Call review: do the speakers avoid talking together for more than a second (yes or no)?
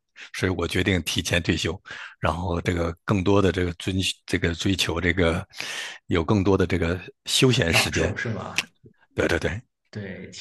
yes